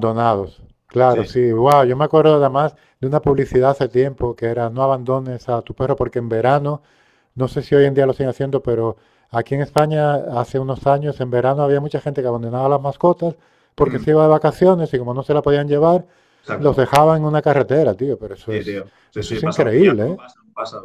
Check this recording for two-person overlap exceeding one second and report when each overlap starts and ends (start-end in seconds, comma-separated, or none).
18.5-20.2